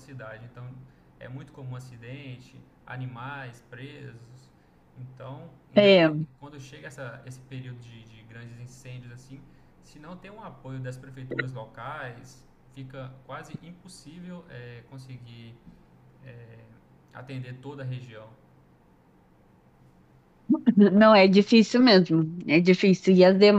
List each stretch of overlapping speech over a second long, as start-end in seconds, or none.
none